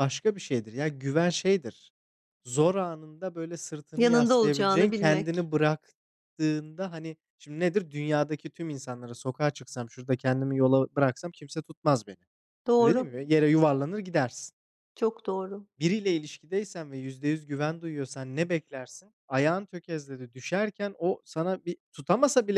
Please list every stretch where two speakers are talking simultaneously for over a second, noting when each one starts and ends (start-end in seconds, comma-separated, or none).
4.0-5.5